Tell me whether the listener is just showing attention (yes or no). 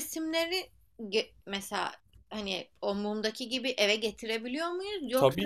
no